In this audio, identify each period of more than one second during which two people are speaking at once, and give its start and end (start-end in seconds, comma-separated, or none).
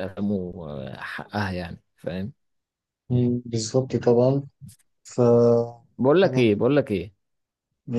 none